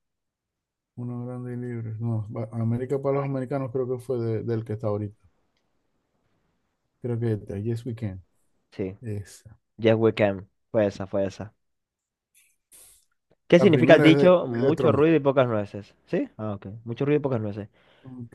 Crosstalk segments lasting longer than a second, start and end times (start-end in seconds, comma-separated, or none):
13.6-15.0